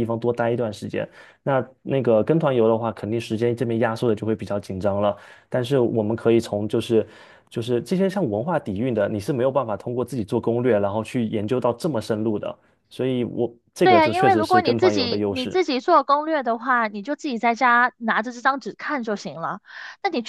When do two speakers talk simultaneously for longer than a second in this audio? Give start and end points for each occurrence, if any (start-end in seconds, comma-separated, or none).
13.8-15.6